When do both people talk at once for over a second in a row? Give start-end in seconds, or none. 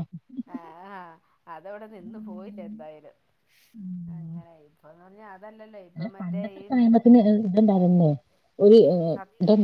none